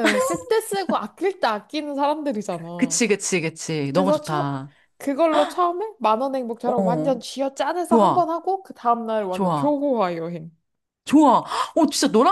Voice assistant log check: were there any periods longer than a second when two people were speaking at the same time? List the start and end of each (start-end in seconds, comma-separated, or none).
none